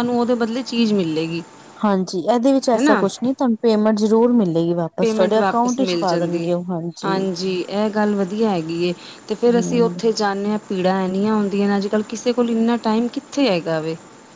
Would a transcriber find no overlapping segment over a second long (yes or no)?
no